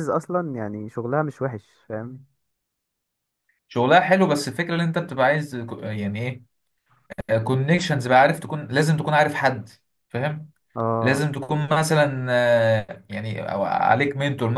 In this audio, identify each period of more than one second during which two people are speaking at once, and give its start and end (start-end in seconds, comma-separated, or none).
none